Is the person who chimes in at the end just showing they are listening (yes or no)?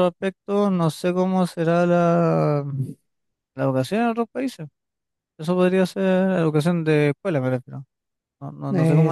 no